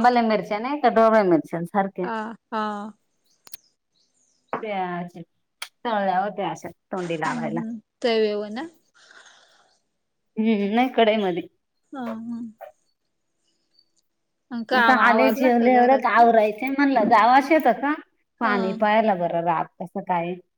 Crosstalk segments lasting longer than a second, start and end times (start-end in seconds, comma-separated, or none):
14.8-16.3